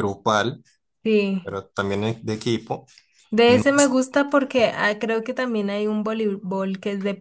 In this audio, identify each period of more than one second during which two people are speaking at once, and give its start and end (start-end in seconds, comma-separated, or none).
none